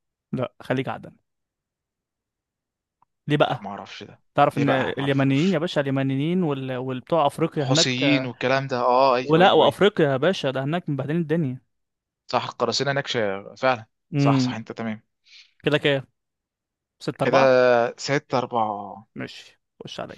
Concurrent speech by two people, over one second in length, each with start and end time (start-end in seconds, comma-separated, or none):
4.3-5.6